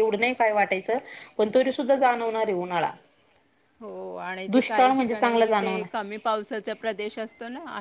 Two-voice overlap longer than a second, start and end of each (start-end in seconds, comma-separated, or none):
4.5-5.9